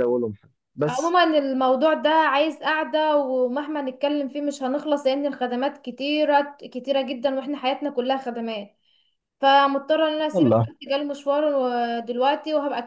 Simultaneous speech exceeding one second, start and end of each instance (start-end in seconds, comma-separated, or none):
none